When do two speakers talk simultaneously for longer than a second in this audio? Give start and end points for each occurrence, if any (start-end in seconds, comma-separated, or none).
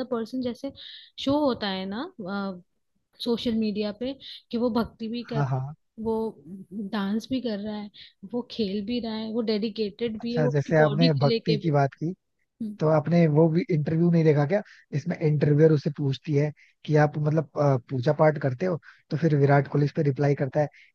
10.2-11.7